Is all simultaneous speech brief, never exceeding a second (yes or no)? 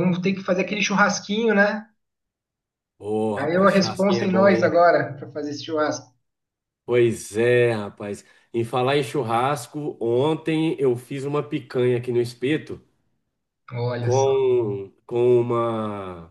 no